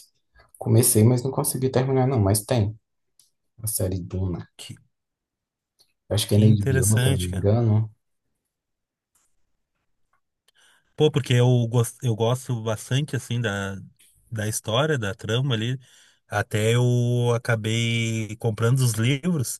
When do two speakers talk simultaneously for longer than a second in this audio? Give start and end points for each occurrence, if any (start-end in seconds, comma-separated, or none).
6.3-7.5